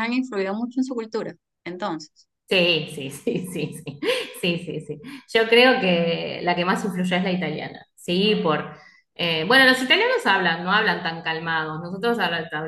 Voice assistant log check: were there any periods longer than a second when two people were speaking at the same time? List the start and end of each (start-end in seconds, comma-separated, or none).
none